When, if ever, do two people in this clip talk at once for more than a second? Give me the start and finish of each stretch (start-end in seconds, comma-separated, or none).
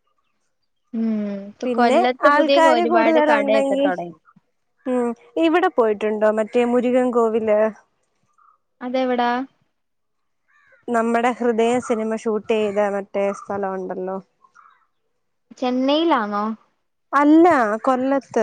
1.6-3.9